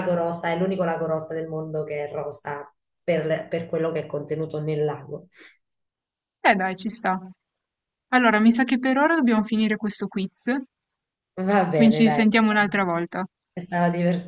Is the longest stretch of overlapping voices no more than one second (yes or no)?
yes